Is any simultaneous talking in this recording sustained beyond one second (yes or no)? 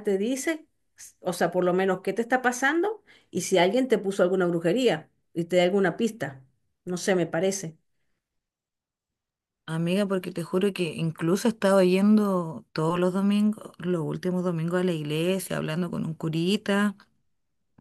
no